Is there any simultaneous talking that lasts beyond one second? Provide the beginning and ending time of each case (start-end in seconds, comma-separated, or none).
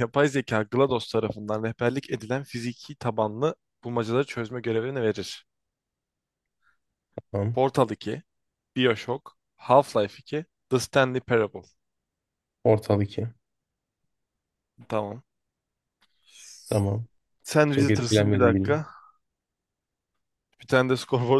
17.6-18.9